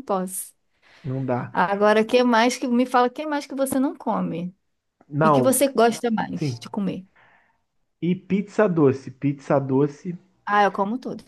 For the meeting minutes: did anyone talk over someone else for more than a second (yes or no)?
no